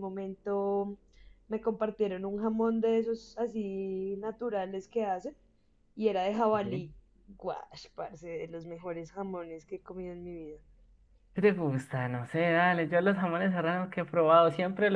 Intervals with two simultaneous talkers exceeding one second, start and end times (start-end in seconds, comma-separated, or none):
none